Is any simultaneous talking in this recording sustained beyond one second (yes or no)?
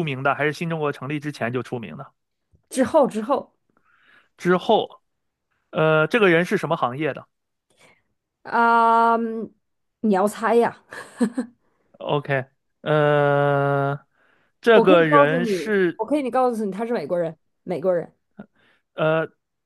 yes